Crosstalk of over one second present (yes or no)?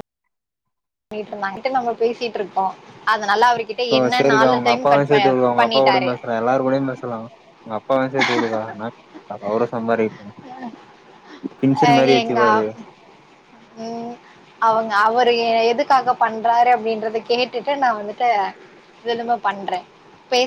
yes